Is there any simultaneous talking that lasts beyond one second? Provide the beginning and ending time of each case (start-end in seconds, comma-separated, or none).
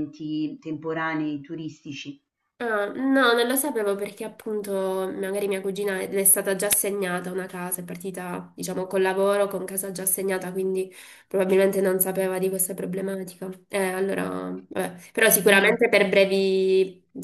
none